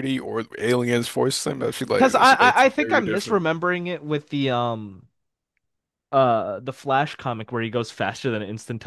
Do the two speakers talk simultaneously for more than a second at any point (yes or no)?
yes